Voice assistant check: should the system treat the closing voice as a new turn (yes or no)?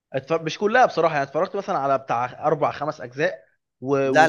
yes